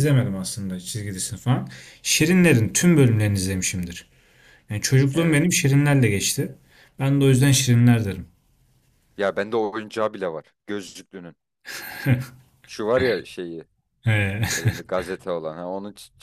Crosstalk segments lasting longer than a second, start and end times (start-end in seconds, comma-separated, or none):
none